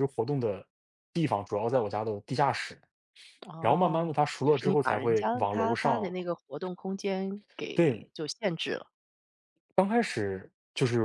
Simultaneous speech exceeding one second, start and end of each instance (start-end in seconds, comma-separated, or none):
3.6-6.1